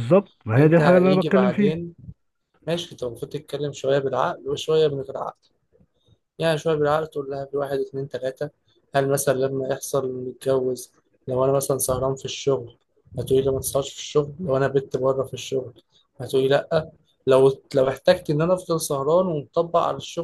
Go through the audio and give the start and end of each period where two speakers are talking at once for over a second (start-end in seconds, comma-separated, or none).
0.5-1.8